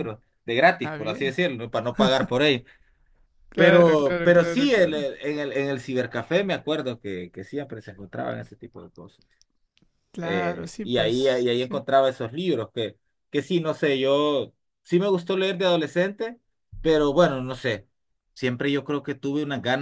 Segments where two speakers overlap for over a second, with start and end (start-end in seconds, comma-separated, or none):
3.5-5.1, 10.2-11.8